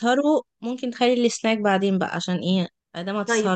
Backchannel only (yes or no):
no